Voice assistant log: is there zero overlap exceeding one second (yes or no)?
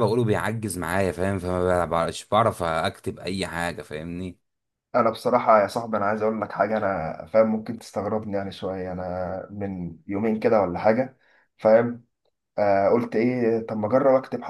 yes